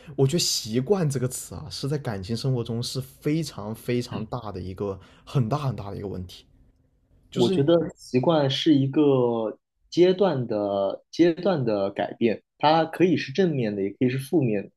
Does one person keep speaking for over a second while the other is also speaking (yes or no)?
no